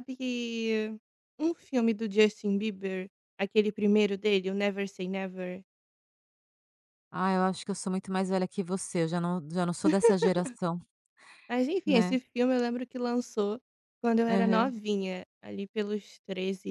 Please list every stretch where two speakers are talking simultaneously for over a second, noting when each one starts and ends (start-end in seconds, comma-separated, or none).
none